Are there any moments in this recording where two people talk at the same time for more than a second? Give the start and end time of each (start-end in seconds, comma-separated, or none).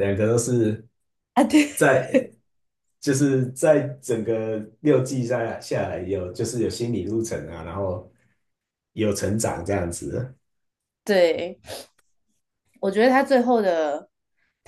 none